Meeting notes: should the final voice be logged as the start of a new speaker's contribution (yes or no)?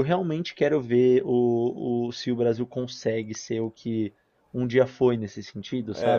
yes